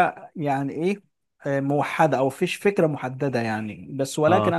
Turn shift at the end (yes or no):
no